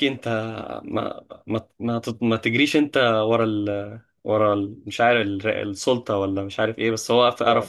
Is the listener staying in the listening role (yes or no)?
yes